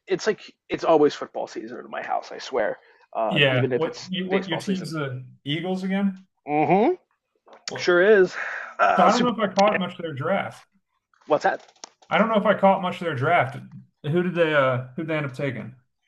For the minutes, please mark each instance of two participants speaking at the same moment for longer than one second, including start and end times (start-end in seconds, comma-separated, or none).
3.3-4.9